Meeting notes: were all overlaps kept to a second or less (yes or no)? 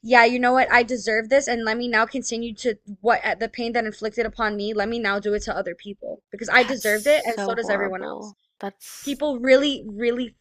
no